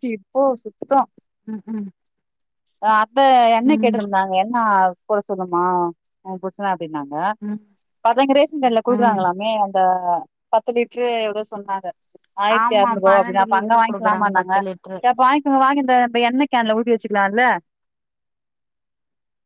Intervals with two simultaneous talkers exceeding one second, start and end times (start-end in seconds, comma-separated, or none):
12.6-14.5